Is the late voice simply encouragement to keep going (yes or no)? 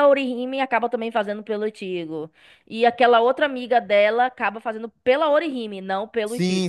no